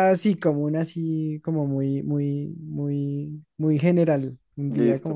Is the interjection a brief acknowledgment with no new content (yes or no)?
no